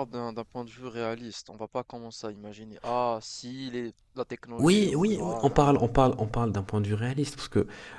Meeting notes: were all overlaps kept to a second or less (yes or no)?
no